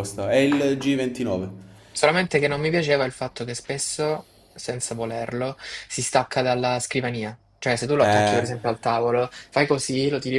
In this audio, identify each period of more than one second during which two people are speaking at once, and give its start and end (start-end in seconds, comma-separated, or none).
none